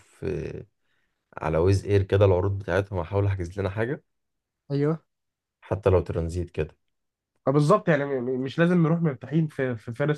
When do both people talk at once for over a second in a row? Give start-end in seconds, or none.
none